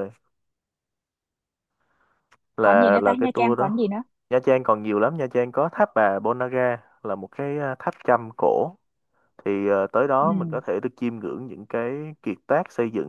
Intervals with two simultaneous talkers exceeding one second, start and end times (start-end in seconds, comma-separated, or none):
2.6-3.9